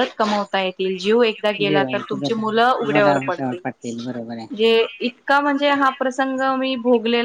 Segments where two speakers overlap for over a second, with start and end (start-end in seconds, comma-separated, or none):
1.7-3.5